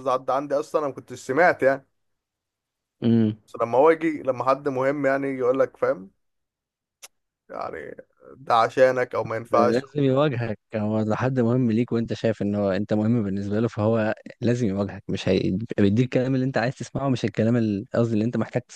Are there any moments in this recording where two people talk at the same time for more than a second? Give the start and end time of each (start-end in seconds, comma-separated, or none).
none